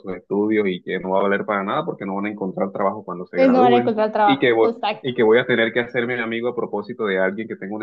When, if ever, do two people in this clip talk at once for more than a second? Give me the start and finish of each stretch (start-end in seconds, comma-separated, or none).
3.3-5.1